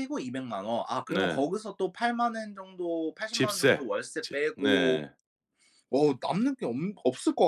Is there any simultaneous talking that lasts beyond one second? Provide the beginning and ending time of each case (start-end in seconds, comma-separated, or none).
3.3-5.0